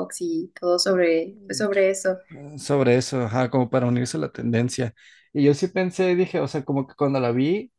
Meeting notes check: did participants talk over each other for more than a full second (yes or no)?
no